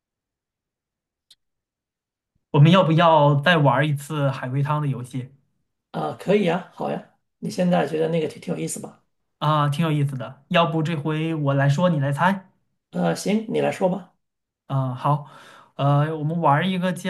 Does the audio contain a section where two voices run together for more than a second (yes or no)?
no